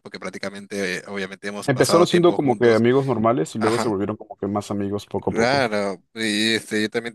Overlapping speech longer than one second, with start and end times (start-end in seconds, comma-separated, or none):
1.6-2.8